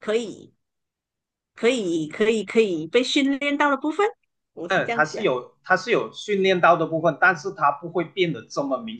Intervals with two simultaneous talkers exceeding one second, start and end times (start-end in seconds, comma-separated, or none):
none